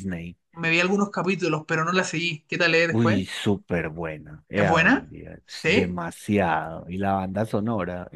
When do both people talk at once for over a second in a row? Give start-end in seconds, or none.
4.5-6.0